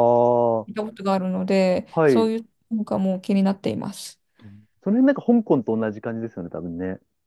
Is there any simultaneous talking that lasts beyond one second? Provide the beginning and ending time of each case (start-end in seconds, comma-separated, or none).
none